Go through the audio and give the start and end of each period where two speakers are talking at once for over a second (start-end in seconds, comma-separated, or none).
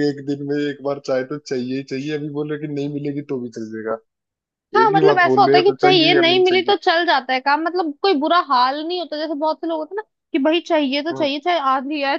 4.8-6.7